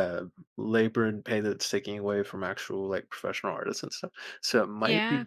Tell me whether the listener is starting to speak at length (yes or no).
no